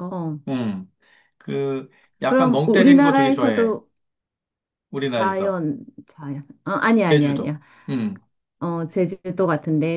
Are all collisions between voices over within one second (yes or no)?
no